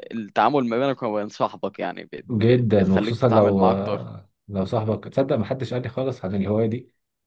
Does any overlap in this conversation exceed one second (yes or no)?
yes